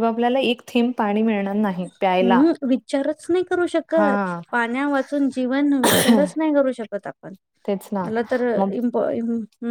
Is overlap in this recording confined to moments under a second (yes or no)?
yes